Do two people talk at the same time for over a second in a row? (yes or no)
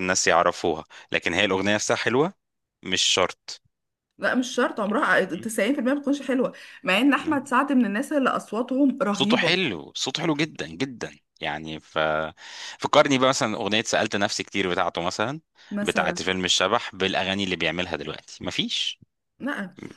no